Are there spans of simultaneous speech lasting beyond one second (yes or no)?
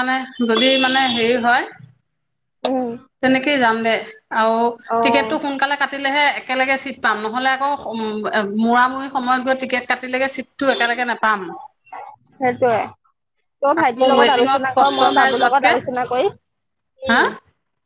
yes